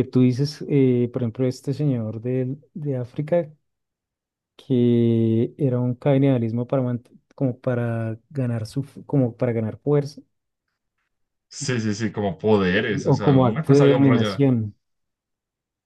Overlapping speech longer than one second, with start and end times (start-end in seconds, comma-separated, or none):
13.1-14.4